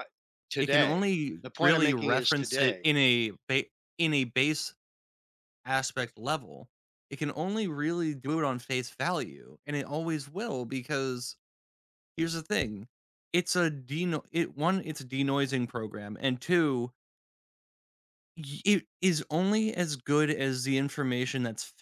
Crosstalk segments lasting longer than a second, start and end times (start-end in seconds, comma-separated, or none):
0.6-2.9